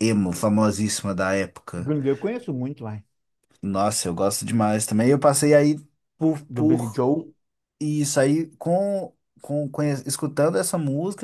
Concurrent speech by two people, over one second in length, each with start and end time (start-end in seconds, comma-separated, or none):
none